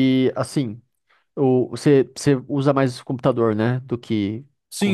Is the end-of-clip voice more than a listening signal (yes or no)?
yes